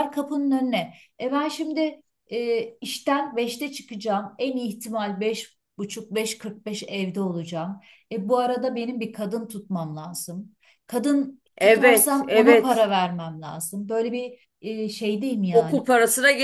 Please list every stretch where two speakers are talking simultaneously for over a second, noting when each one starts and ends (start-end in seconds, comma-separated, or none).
11.6-12.9